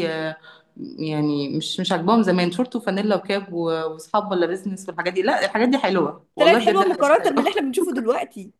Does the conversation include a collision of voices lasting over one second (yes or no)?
yes